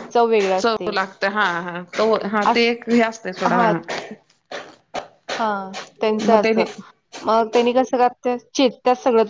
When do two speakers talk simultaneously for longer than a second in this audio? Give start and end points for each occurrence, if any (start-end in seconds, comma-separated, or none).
none